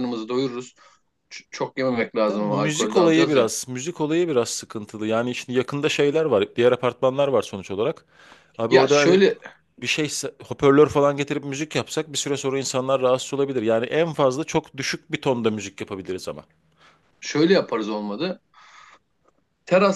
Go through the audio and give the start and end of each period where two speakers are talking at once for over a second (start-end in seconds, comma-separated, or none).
2.3-3.5